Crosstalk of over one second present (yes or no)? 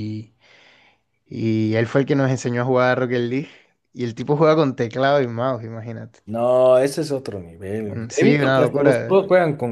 yes